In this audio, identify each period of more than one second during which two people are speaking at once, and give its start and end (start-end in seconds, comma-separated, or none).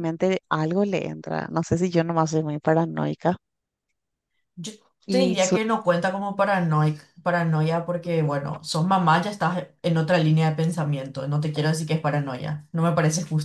none